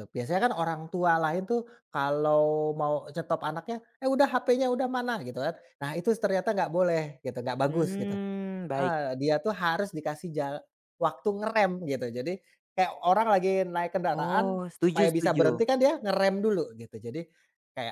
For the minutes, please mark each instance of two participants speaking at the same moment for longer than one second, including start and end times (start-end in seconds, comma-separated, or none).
14.1-15.6